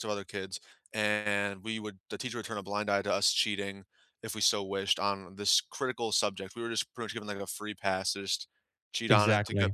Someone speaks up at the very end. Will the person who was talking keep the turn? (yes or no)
yes